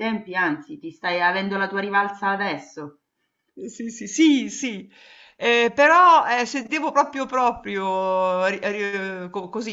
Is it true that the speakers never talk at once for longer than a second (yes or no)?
yes